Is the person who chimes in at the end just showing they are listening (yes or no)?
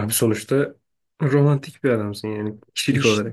no